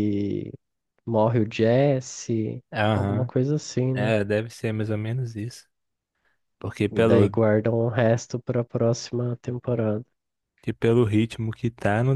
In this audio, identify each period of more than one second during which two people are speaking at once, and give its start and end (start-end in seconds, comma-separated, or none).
none